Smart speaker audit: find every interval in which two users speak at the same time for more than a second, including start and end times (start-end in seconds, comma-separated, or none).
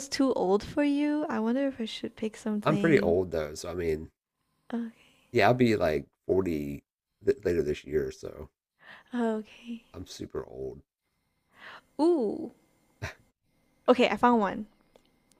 none